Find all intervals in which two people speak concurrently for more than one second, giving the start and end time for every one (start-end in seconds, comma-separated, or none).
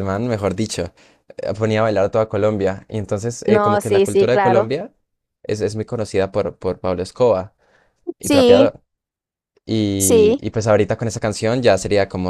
3.5-4.7